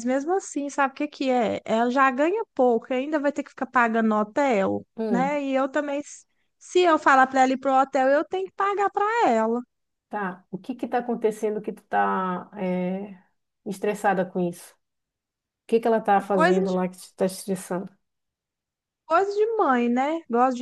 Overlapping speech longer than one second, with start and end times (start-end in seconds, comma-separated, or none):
none